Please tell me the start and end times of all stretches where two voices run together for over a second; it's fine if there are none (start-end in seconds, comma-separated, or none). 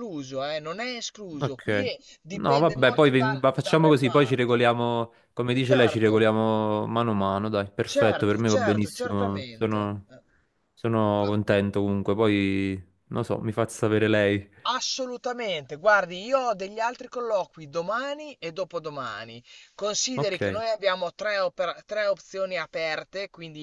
2.3-4.7, 7.8-10.1